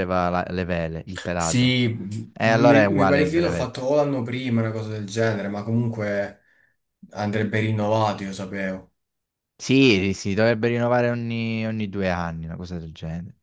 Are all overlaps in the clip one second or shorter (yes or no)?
no